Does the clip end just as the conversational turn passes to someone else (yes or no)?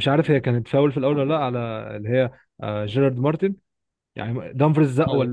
no